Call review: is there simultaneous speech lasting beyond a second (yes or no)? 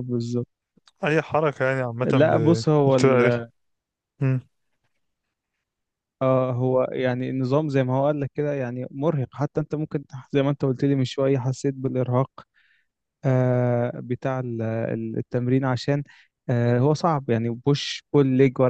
yes